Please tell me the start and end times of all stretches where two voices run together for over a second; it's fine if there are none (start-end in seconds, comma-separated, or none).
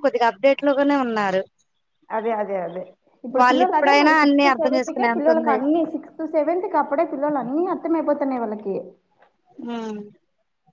3.4-5.6